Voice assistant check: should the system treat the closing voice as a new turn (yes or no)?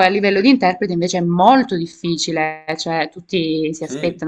no